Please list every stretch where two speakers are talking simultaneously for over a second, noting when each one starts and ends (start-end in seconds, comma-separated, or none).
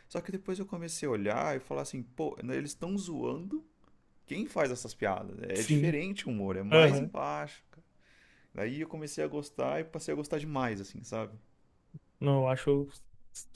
none